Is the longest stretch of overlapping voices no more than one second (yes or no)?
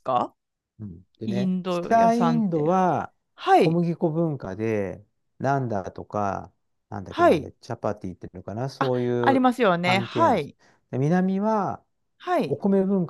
no